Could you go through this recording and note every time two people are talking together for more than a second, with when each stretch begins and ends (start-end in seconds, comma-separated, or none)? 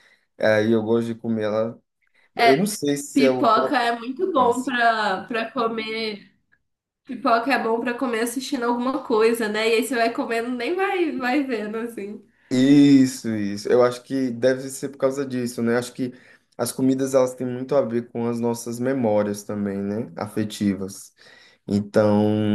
3.1-4.7